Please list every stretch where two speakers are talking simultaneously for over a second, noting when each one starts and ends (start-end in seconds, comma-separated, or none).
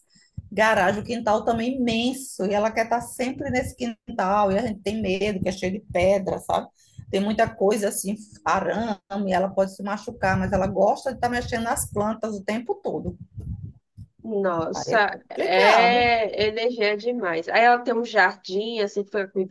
14.7-16.1